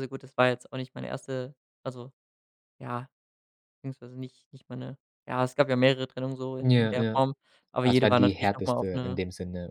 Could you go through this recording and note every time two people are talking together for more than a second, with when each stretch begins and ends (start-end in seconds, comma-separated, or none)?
7.8-9.2